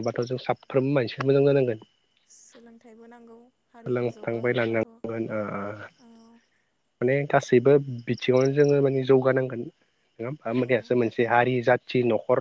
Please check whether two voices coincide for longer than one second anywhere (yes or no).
yes